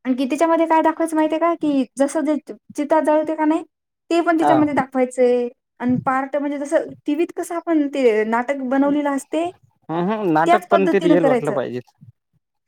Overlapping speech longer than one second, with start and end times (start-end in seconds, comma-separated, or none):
9.9-11.6